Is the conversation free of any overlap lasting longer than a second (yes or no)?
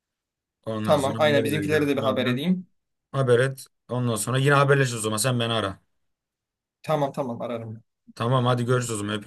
no